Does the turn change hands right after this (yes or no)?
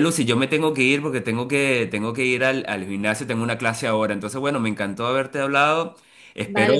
no